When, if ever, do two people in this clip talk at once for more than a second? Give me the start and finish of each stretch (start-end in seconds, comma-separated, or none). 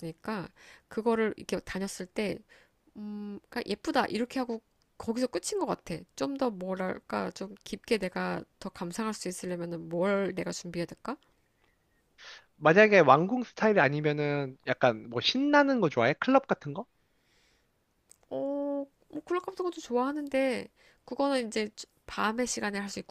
none